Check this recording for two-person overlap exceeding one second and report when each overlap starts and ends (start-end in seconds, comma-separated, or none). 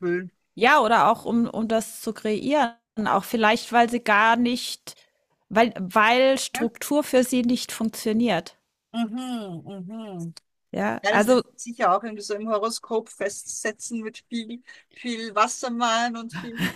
none